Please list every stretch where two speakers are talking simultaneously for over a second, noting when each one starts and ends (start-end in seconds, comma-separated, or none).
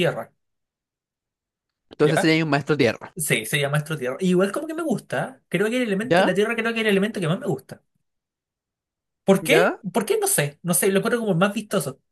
none